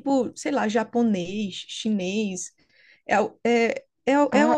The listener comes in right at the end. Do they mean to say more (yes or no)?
yes